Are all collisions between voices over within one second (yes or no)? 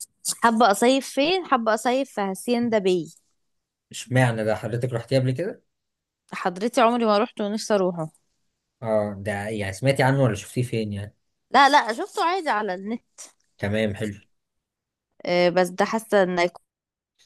yes